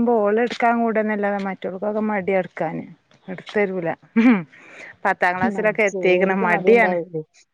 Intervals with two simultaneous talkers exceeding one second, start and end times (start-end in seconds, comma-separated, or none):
5.5-7.0